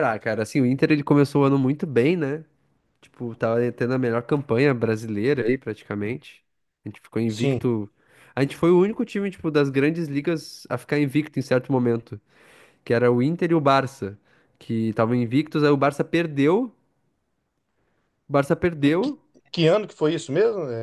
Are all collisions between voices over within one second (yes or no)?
yes